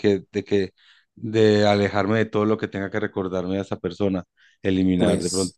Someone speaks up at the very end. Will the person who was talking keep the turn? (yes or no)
yes